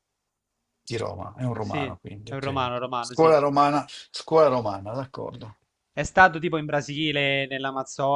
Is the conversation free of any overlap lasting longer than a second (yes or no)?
no